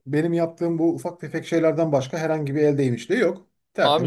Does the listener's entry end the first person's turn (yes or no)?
yes